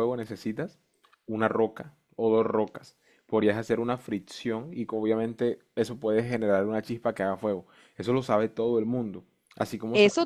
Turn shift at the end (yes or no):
yes